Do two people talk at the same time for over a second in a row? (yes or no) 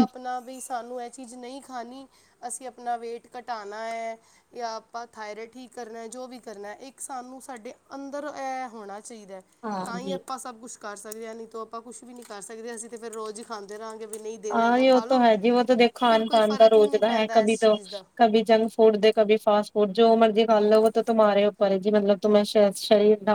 yes